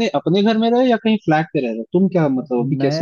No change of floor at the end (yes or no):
no